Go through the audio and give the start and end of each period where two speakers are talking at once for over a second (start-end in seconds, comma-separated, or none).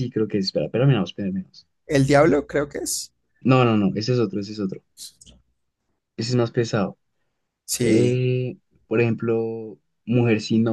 none